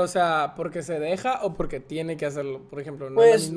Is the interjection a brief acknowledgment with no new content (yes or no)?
no